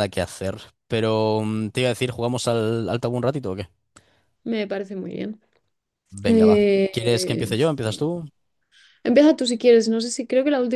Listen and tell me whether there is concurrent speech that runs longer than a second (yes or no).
yes